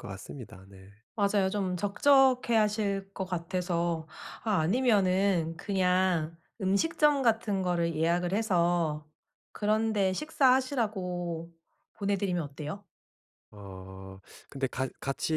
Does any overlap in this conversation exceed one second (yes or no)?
no